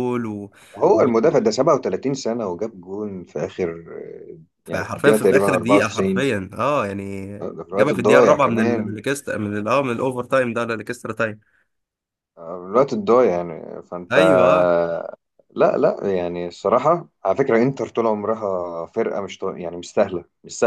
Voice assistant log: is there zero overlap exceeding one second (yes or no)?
no